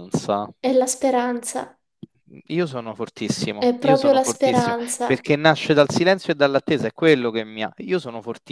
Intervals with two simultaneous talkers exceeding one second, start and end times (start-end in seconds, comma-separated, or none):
3.6-5.3